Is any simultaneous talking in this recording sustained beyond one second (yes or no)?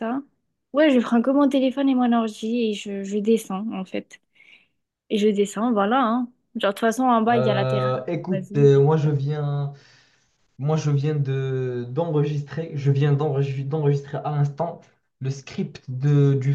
yes